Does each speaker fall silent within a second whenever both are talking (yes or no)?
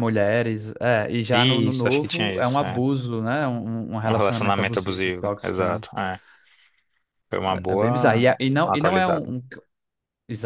no